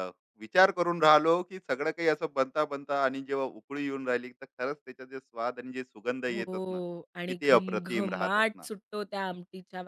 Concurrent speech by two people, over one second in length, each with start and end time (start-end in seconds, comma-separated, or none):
7.3-8.7